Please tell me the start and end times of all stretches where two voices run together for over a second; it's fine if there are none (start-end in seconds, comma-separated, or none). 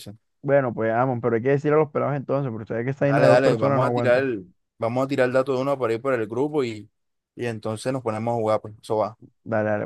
3.0-4.3